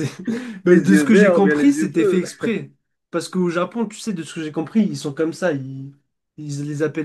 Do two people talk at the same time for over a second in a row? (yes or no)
yes